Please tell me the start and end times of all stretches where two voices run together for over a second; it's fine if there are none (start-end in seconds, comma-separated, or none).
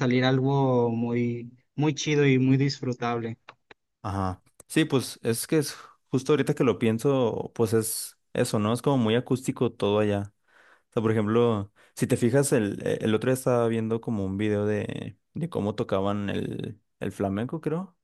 none